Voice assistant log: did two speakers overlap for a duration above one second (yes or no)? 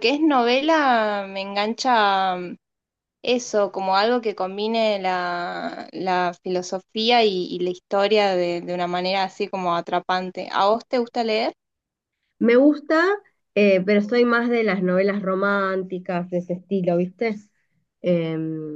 no